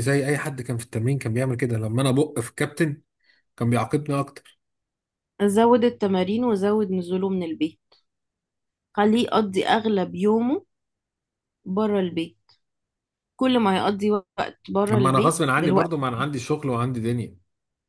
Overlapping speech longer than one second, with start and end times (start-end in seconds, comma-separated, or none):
14.8-16.2